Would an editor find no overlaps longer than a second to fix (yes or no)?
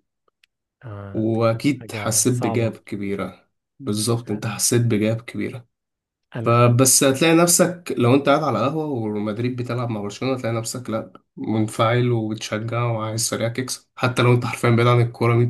no